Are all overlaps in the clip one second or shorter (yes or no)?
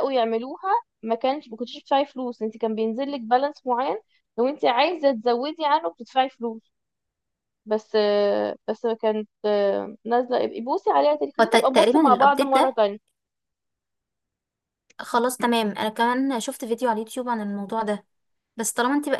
no